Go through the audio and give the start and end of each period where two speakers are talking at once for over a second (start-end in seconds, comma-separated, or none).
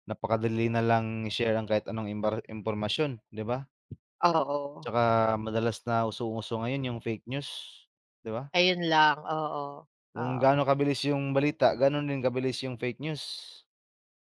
none